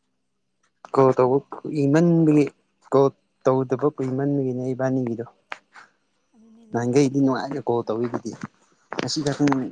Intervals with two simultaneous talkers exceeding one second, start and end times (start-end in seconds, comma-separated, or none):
6.7-8.1